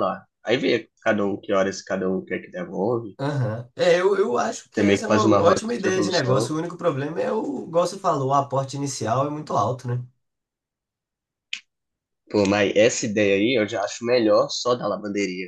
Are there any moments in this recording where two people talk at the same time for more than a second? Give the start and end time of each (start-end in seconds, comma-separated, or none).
4.7-6.5